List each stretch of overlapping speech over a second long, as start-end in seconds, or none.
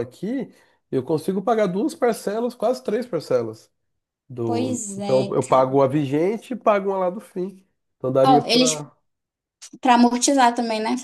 4.4-5.8